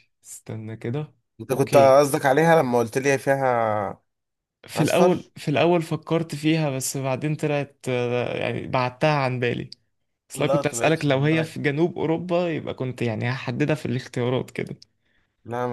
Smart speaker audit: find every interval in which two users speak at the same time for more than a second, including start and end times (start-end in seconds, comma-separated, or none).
10.3-11.6